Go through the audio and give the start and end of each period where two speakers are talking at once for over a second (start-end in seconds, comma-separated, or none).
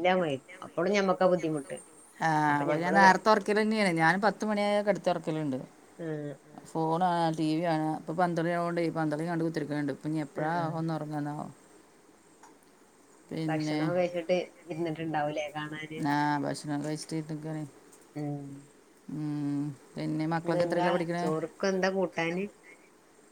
none